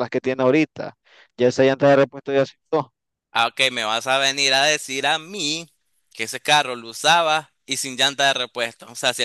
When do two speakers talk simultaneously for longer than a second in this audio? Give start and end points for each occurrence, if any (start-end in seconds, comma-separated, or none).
none